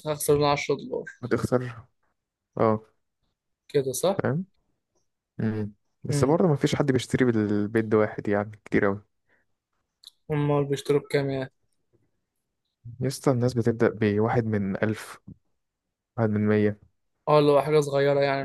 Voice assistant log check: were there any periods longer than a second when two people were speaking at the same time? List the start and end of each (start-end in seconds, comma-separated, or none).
none